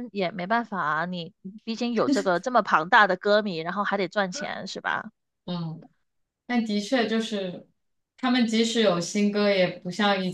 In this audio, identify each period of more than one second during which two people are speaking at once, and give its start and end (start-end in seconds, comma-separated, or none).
none